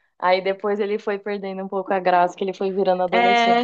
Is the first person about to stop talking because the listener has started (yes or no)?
yes